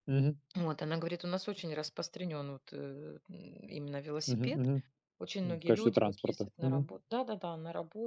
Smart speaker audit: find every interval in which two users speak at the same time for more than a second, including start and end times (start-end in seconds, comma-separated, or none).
5.4-6.9